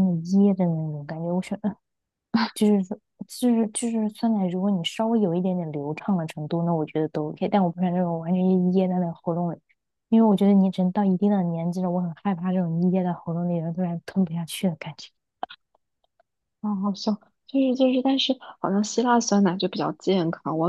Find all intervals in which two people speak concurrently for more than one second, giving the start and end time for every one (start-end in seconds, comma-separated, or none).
none